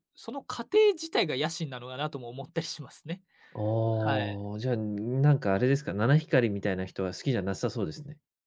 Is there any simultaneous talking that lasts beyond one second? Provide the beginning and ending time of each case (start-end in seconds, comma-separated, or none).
none